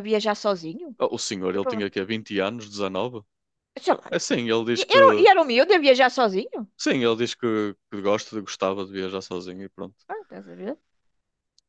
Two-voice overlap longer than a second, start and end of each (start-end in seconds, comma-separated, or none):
none